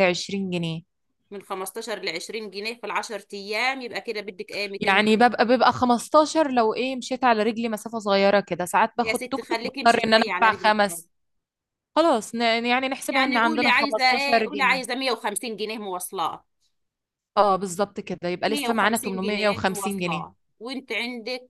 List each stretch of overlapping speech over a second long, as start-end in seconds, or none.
9.0-11.0, 13.1-14.9, 18.4-20.3